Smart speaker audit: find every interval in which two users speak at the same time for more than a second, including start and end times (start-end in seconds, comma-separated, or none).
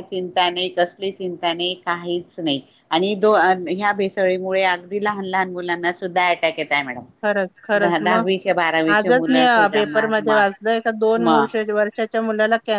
8.9-10.4